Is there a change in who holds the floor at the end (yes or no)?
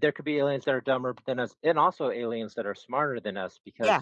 no